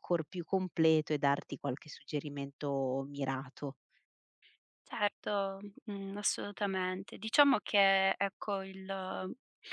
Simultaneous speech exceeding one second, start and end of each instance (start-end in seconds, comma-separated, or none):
none